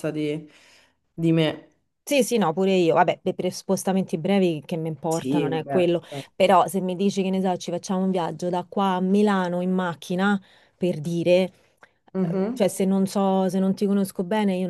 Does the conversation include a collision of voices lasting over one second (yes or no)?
yes